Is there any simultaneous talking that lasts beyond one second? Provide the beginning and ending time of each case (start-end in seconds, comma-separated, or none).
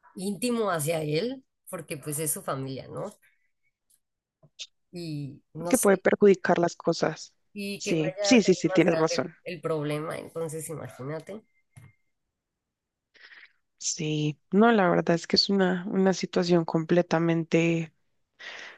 7.8-9.3